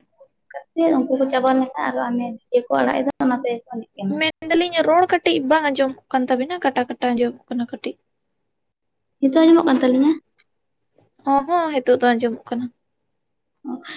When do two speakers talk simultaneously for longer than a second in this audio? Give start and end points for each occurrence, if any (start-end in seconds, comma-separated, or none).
none